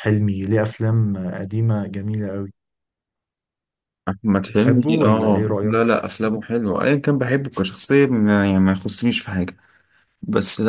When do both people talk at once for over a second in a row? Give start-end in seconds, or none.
4.5-5.9